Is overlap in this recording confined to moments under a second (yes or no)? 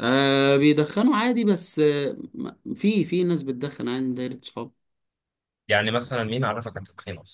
yes